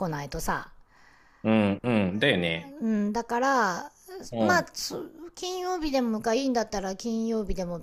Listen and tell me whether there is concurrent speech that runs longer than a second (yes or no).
no